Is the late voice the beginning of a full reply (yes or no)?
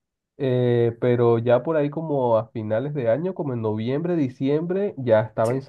no